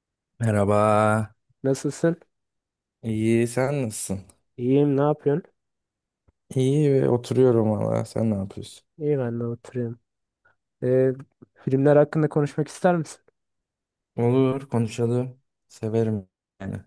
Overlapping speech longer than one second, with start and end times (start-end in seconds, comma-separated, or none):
none